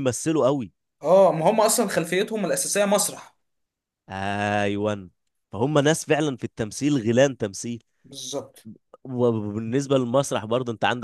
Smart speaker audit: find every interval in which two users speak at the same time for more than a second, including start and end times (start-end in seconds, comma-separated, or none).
none